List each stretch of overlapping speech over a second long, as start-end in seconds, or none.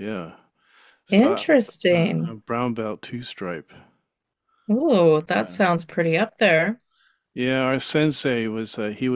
1.1-2.4